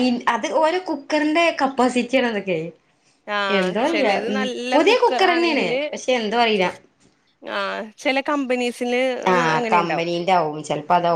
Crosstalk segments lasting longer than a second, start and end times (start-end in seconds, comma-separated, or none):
3.6-5.8